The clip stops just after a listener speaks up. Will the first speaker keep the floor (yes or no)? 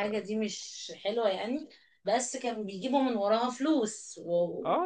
no